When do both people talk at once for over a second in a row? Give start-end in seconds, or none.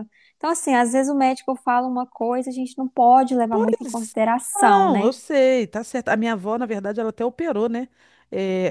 none